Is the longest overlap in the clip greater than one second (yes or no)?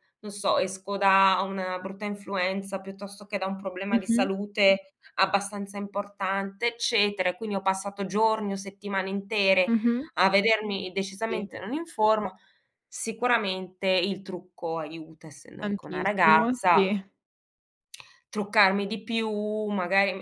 yes